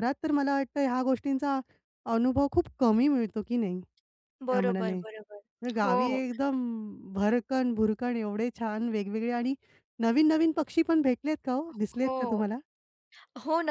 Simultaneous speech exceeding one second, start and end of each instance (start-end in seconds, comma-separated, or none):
none